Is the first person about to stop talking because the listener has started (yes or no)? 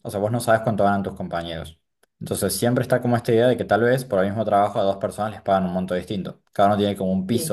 no